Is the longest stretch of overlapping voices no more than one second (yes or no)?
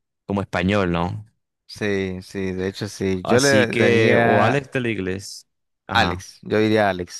no